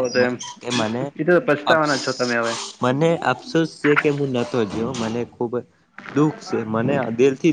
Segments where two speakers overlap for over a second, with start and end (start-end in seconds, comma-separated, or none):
none